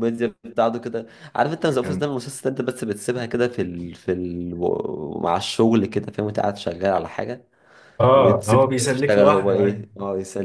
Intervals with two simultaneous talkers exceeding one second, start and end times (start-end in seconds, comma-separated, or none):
8.1-9.6